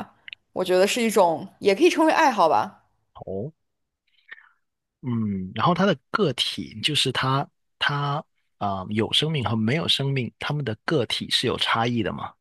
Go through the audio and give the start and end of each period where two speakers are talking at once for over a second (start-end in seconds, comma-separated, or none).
none